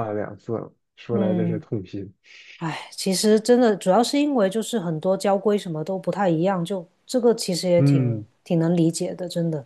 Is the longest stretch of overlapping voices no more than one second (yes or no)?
yes